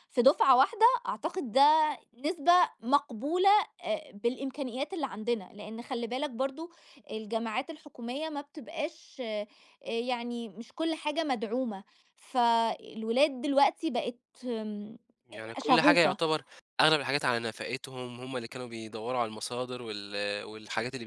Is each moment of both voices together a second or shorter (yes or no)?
yes